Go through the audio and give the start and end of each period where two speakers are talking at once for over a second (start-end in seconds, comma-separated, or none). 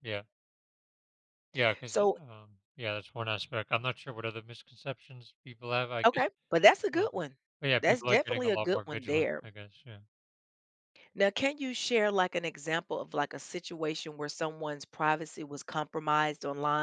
7.8-9.4